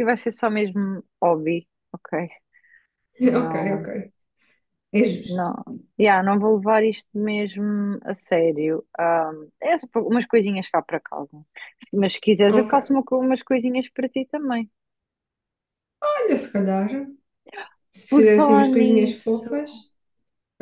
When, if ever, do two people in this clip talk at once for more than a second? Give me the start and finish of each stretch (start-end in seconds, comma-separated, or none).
18.1-19.5